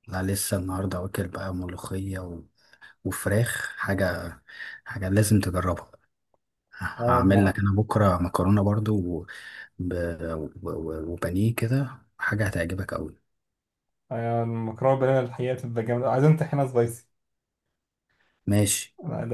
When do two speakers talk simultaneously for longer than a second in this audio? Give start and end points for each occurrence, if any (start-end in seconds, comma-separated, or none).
none